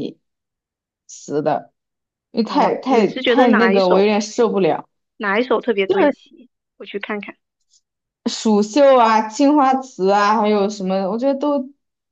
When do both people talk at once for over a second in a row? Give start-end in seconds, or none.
2.4-4.0